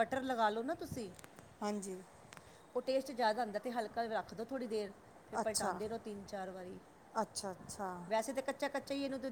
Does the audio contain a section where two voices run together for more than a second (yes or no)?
no